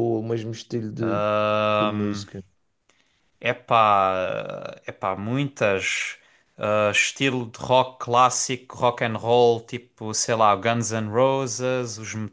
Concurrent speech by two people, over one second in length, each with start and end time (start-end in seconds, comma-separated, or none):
none